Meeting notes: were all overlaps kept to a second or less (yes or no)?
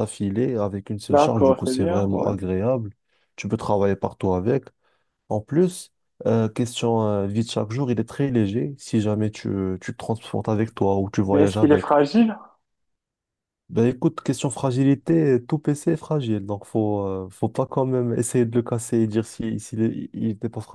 no